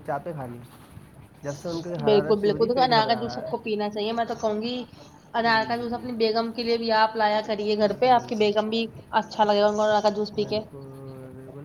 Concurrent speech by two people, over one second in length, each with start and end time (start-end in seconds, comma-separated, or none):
2.1-3.7